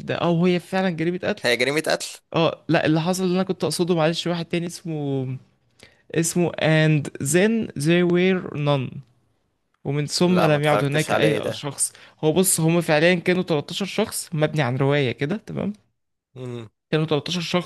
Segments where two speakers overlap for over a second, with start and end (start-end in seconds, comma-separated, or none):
10.3-11.7